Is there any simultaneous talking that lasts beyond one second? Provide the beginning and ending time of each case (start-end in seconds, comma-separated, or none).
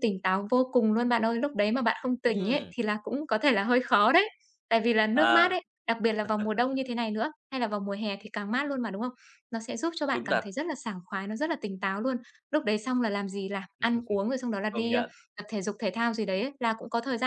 none